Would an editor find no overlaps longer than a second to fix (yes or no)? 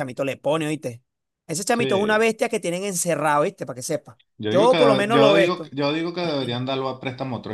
no